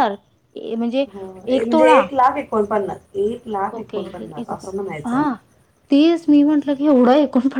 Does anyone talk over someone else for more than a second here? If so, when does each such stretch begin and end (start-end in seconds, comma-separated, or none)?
none